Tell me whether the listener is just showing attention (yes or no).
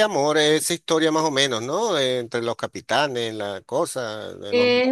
no